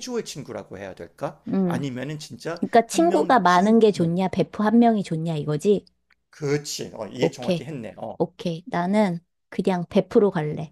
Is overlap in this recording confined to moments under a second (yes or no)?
no